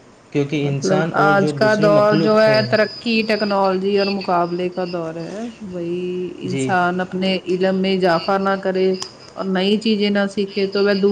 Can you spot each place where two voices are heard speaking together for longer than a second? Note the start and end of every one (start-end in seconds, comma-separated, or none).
0.6-2.5